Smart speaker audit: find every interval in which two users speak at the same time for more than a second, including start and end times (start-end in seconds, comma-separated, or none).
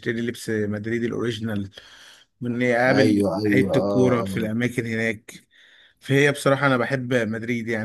2.9-4.5